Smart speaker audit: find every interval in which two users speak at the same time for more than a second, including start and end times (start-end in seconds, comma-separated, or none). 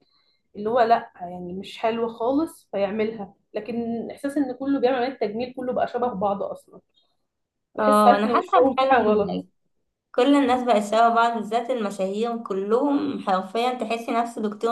7.8-9.4